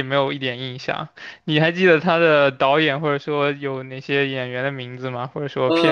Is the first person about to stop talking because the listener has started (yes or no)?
yes